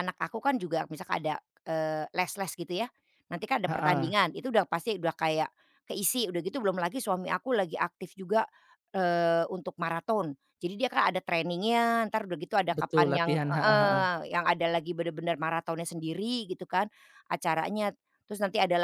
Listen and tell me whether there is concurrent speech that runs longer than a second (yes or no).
yes